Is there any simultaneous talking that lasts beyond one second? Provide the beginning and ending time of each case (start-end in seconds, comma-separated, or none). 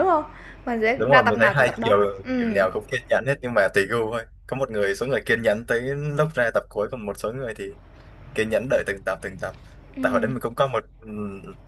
0.9-2.6